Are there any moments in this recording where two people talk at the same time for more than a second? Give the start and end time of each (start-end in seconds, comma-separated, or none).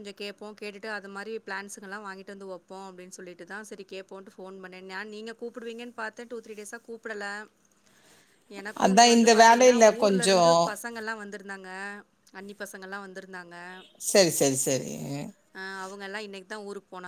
8.8-10.5